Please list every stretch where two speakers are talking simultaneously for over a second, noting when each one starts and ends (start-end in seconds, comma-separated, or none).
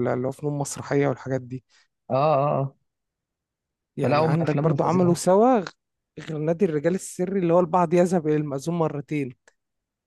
4.0-5.2